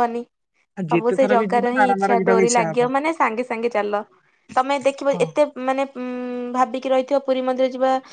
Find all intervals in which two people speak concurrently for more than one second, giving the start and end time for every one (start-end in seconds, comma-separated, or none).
0.9-2.8